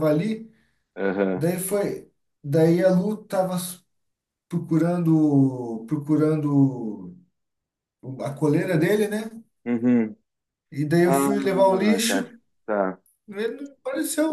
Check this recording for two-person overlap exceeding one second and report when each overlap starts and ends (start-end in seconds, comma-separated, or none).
11.0-12.3